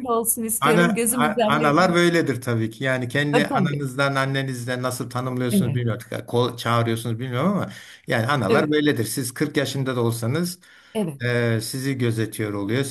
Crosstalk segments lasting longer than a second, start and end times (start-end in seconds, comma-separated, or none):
0.6-2.0